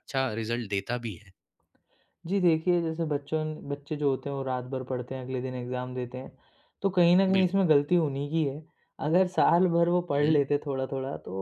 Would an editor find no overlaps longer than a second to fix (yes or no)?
yes